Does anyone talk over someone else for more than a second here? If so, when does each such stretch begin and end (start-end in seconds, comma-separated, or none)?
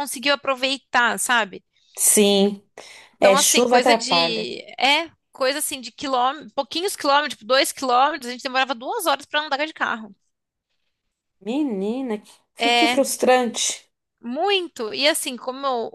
3.2-4.5